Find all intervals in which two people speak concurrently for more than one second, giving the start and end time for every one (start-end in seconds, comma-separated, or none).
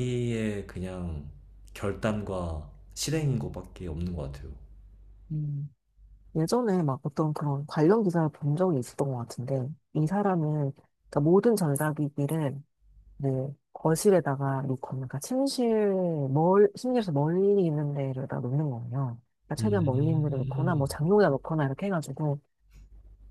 19.6-20.9